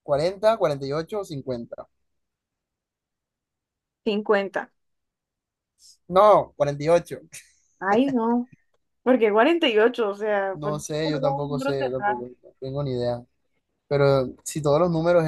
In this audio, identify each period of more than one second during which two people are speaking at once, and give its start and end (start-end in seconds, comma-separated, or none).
10.5-12.2